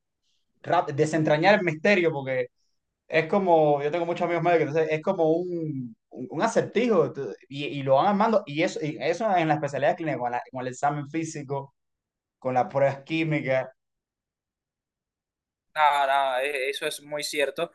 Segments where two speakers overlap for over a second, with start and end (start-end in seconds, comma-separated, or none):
none